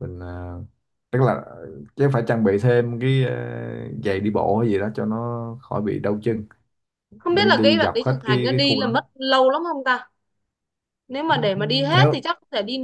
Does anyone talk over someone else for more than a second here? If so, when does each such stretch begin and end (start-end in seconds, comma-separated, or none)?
7.3-8.9